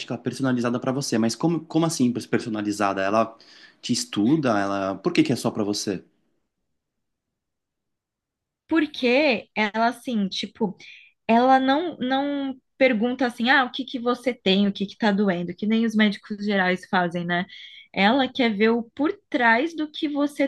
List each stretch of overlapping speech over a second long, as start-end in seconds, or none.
none